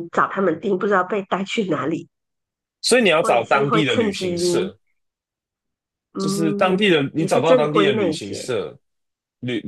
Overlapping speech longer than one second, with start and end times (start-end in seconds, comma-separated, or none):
3.2-4.7, 6.2-8.5